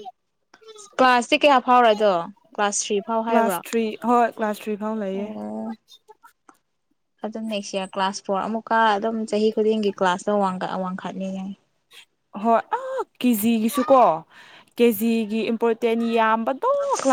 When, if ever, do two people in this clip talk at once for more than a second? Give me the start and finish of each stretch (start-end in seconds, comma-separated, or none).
none